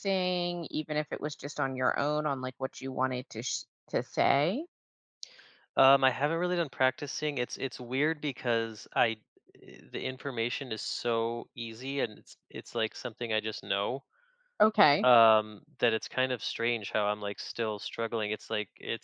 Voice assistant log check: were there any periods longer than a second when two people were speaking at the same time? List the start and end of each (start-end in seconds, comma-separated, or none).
none